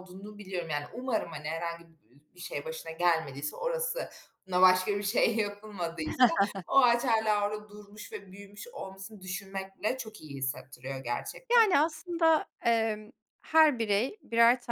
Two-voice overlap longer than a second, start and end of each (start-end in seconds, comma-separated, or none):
none